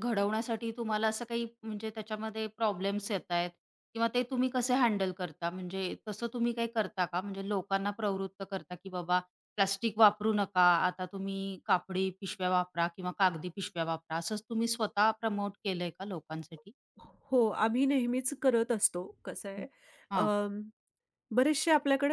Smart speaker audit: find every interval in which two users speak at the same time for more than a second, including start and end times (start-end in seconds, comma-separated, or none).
none